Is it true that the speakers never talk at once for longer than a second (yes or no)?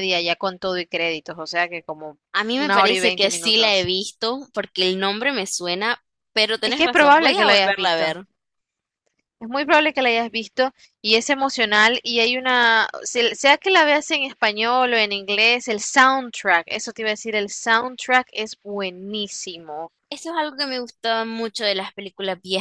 no